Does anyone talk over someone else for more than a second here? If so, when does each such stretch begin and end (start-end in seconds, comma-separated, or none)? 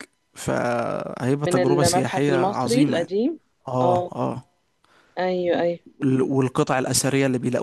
1.4-3.2